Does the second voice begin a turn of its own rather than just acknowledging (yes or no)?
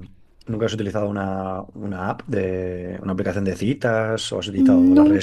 no